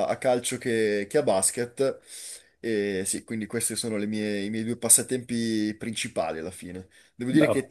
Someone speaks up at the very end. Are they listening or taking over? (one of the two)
listening